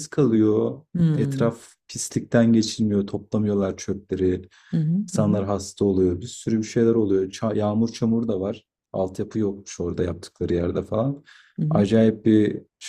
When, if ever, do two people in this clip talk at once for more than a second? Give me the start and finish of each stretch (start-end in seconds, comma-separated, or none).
none